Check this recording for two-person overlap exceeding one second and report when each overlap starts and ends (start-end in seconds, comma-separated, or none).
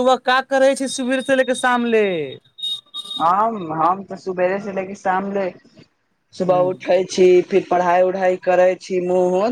none